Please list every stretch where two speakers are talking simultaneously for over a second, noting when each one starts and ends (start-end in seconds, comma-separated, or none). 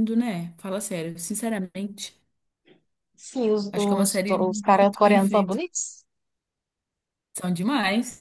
3.7-5.6